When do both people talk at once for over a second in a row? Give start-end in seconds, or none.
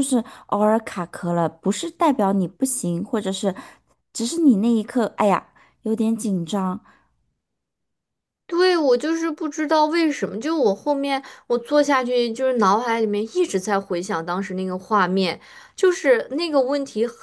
none